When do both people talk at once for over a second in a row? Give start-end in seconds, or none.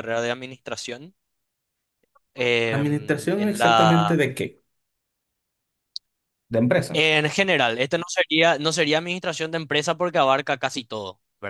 2.7-4.2